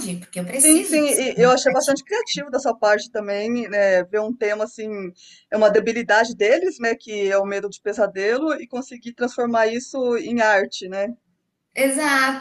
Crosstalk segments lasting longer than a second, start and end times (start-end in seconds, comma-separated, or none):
0.6-2.1